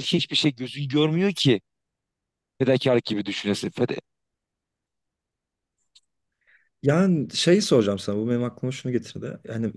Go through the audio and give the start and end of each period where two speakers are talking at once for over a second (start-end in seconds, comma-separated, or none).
none